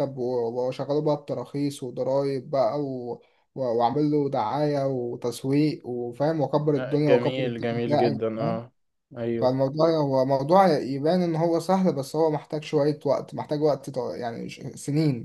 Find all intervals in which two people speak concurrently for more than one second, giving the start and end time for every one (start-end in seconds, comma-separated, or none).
6.8-8.2